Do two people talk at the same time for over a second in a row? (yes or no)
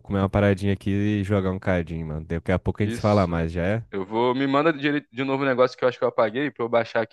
no